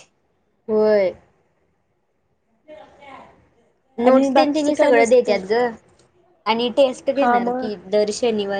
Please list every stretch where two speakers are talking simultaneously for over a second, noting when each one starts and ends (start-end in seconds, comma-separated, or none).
4.1-5.3